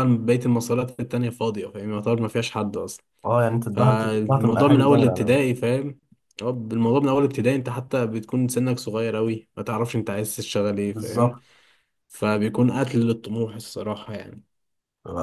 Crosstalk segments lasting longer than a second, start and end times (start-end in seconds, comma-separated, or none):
3.7-5.4